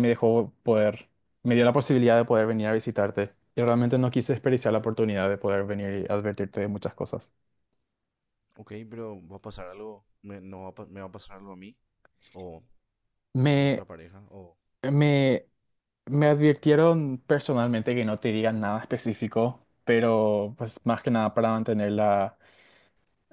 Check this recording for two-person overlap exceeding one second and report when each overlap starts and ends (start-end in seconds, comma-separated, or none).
none